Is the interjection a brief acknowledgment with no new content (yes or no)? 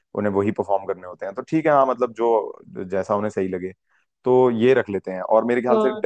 yes